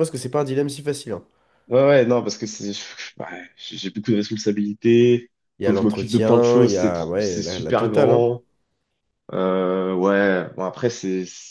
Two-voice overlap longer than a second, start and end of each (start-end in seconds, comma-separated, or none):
5.6-8.2